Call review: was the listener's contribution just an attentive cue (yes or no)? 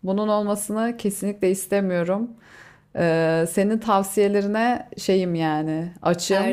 no